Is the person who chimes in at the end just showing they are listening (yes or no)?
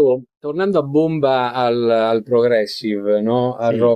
yes